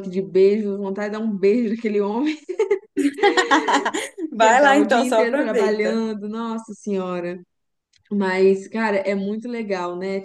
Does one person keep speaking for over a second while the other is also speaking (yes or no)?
yes